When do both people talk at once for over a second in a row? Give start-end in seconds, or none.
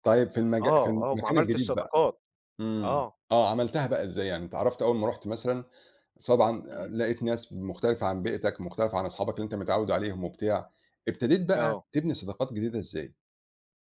0.6-1.9